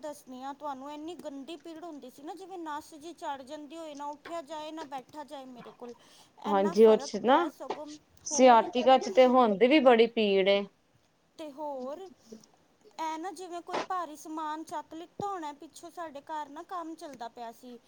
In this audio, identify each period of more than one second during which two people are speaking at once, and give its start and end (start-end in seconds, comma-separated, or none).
none